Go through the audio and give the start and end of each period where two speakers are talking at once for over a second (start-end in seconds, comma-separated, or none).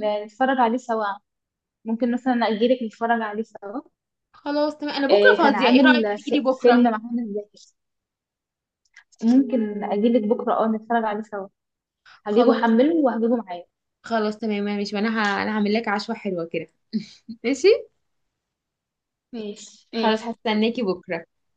5.1-6.8